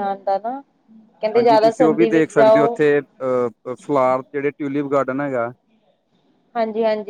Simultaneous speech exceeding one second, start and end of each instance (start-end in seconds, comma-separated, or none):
1.3-2.6